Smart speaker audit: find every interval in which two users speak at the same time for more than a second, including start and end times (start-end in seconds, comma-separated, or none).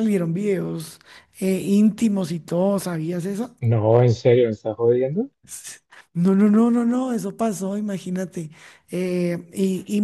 none